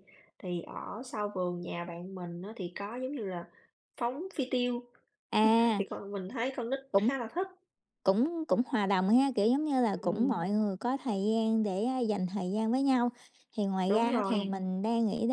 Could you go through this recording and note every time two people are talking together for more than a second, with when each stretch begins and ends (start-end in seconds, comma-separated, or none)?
none